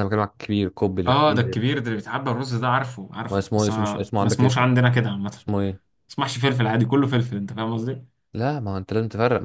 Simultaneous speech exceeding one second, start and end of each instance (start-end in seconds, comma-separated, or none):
3.3-4.7